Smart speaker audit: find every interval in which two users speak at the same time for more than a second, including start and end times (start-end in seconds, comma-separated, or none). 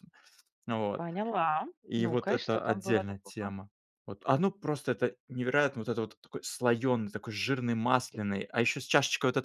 1.8-3.5